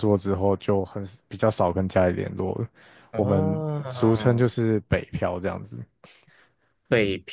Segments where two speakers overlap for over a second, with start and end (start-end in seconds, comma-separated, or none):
3.1-4.5